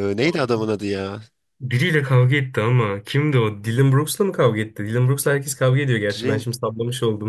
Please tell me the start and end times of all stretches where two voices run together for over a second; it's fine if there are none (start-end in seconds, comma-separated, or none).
none